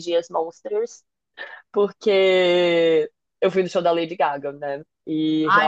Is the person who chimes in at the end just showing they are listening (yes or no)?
no